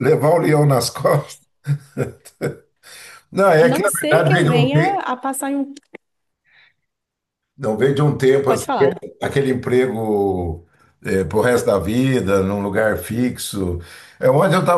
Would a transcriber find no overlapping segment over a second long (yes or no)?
no